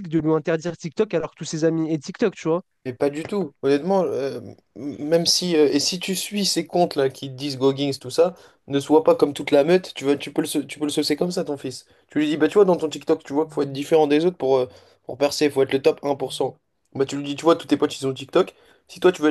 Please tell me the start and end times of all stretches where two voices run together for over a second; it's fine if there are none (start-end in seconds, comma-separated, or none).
none